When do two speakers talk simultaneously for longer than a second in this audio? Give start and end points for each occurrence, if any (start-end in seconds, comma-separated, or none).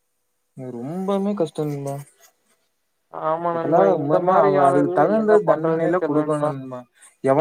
3.5-6.5